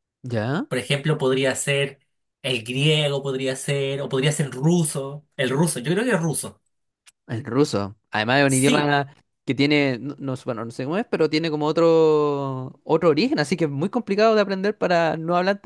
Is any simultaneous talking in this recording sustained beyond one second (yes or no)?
no